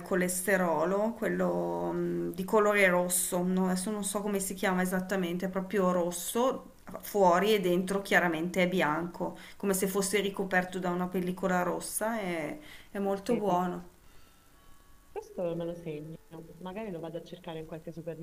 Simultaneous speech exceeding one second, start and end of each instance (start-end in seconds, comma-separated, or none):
none